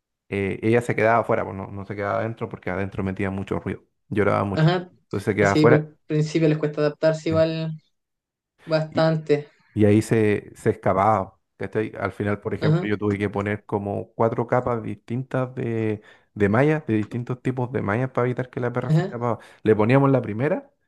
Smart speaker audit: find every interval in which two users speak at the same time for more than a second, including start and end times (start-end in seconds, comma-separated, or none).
none